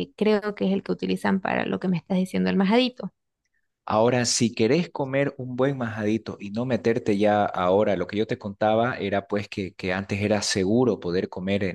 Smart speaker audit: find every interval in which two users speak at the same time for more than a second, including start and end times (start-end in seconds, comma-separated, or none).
none